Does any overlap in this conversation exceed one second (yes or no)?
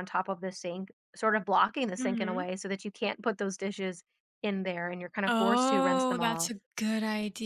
yes